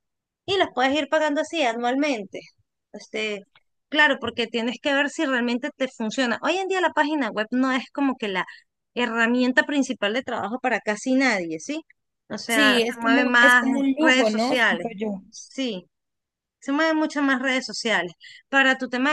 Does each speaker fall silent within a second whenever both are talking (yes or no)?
no